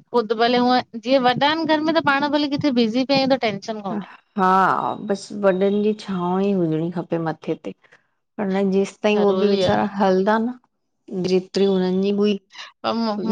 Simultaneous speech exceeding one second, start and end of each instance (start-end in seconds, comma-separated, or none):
none